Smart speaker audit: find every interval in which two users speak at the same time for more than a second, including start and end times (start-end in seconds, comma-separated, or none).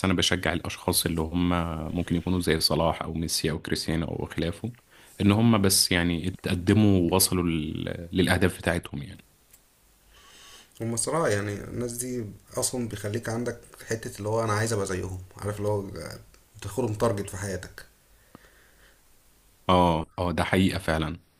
none